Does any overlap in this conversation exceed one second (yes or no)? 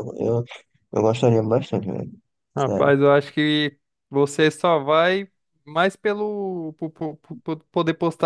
no